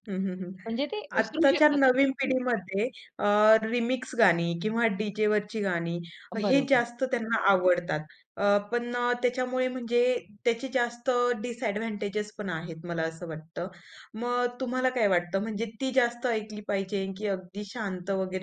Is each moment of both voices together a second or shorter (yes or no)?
yes